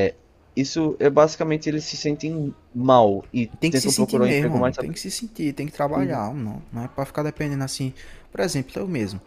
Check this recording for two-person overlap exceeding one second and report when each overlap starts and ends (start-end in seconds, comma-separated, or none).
3.6-5.0